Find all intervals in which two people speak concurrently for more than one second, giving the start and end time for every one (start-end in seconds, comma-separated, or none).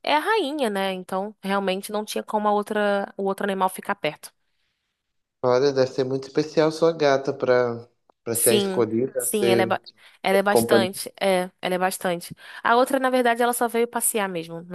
8.3-9.8